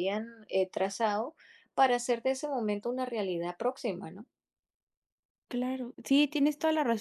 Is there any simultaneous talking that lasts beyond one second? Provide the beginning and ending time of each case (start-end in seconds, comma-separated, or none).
none